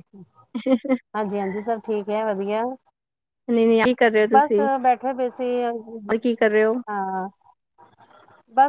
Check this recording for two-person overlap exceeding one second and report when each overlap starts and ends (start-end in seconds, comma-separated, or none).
none